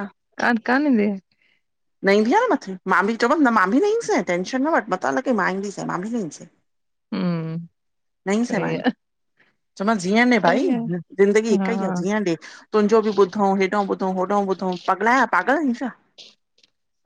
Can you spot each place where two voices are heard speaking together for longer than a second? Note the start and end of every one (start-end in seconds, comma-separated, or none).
none